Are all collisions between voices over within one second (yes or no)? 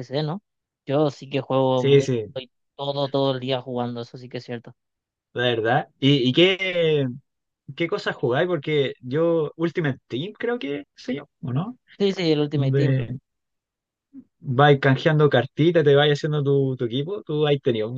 yes